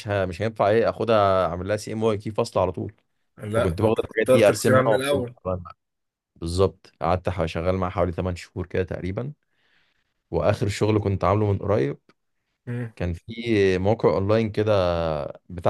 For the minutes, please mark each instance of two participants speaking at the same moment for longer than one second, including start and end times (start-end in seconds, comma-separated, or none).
3.5-5.3